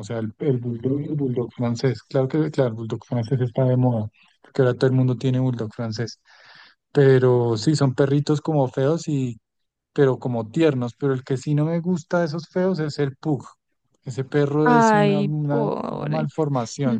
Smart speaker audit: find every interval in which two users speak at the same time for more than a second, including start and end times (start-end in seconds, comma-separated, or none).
14.6-16.3